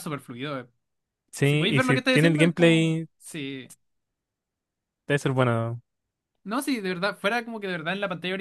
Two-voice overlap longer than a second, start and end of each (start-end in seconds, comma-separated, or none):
1.4-3.1